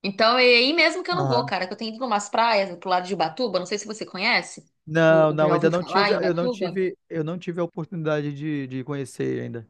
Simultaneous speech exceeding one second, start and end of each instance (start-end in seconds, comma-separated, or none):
5.1-6.8